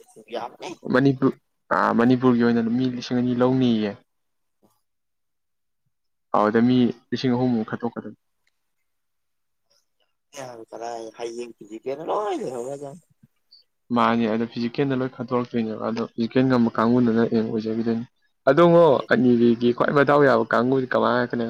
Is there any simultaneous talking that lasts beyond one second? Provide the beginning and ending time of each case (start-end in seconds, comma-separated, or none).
none